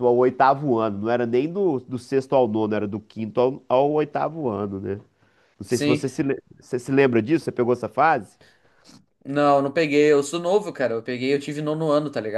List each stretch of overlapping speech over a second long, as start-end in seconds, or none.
none